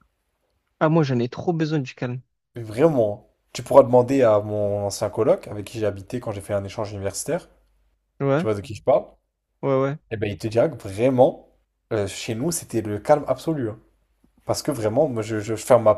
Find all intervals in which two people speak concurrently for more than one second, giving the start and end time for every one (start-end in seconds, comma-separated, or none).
none